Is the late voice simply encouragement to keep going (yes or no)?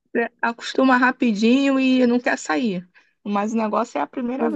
no